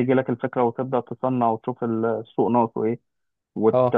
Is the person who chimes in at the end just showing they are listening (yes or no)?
yes